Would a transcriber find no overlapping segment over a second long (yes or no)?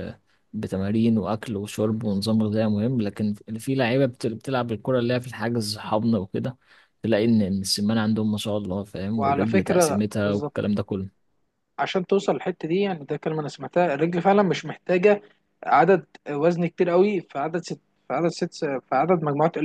no